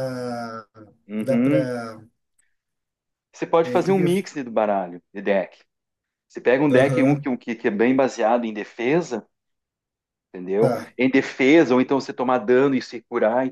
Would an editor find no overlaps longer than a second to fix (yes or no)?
yes